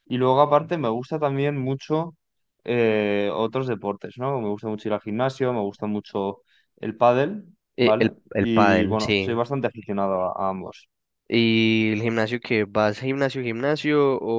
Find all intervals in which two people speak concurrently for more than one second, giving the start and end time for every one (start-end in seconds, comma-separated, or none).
7.8-9.4